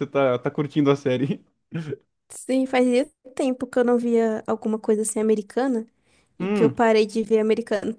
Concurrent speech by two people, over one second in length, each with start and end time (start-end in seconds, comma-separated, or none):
none